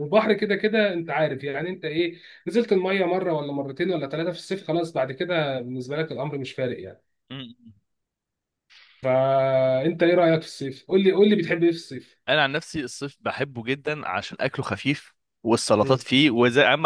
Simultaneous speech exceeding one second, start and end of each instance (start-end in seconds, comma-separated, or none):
none